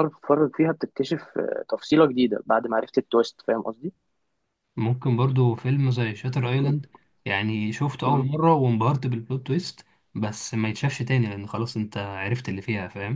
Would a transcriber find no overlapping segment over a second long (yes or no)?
yes